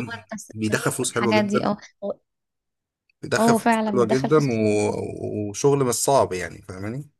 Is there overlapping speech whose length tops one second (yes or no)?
yes